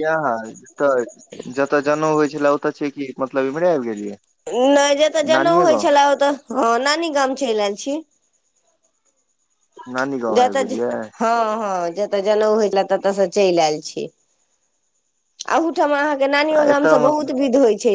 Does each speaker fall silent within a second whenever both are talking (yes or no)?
yes